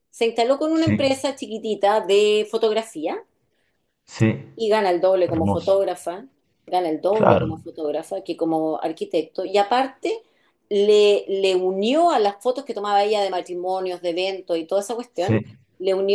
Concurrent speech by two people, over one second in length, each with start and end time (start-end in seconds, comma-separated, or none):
none